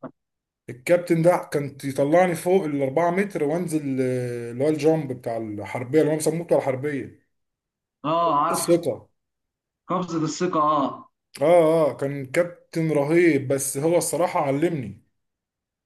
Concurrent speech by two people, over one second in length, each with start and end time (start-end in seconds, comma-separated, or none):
none